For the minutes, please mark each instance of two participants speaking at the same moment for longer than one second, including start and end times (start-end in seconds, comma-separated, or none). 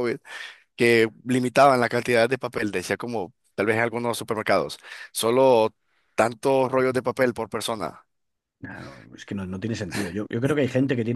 none